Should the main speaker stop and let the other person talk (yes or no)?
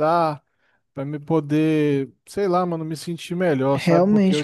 yes